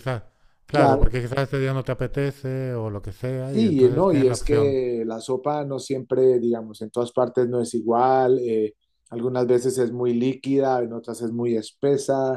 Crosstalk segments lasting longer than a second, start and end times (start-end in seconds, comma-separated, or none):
3.4-4.8